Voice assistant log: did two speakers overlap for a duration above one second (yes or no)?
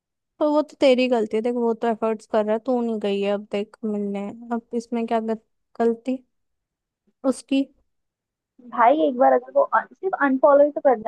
no